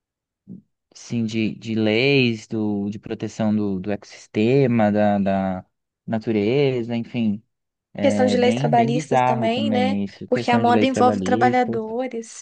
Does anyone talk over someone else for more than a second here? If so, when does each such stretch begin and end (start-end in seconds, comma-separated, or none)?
8.0-11.8